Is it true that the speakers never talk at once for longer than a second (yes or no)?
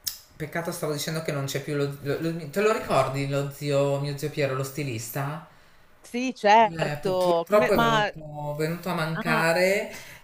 no